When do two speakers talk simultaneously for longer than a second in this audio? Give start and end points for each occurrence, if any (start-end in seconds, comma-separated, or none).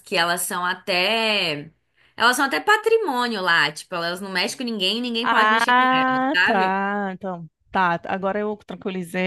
5.2-6.8